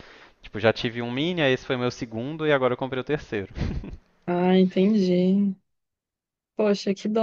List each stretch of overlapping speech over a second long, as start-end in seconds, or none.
none